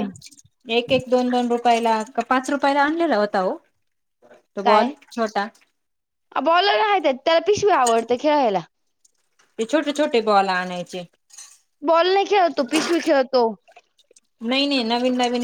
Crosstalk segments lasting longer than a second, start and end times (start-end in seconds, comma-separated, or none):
none